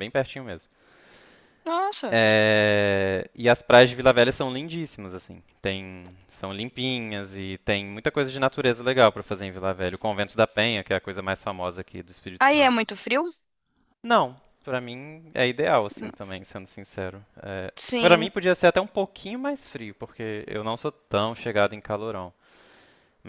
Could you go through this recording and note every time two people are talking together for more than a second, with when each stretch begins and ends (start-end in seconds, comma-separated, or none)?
none